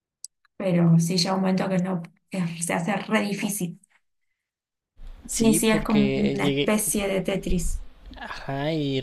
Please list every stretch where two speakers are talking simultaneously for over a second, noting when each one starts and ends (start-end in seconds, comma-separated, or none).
5.3-6.7